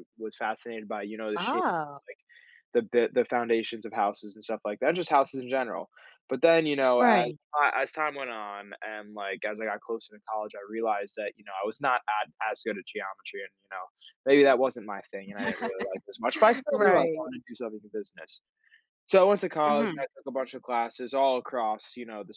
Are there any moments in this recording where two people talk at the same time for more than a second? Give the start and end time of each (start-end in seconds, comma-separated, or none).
none